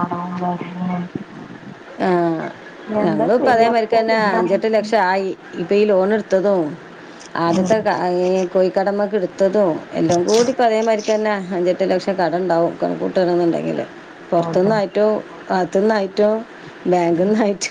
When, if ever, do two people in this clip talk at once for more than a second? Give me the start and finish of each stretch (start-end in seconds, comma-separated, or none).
3.0-4.6